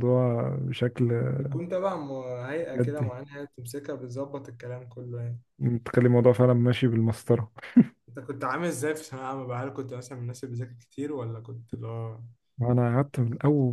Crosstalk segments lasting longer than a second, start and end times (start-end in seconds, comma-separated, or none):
none